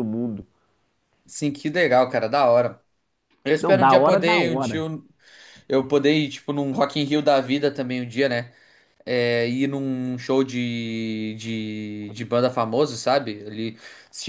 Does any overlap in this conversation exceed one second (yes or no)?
yes